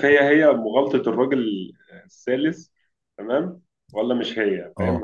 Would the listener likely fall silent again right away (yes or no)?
yes